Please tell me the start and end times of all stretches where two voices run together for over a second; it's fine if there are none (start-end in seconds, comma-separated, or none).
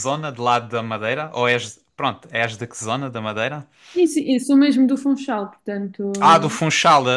none